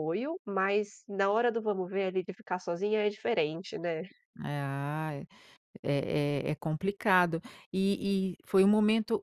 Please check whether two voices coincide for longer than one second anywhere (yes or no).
no